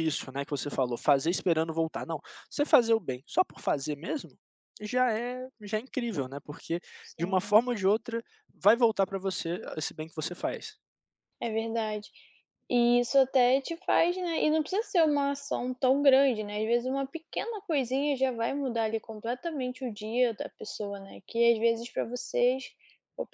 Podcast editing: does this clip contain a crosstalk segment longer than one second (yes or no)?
no